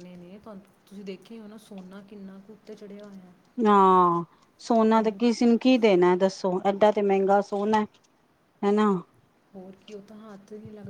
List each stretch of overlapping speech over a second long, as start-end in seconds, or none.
none